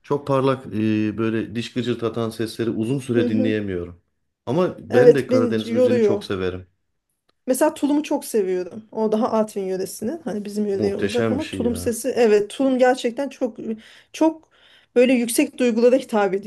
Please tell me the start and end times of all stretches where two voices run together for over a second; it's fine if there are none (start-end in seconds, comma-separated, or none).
4.9-6.2, 10.7-12.0